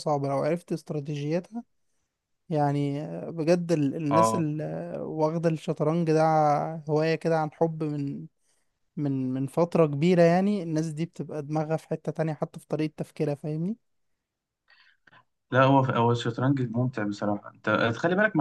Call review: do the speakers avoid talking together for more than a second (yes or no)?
yes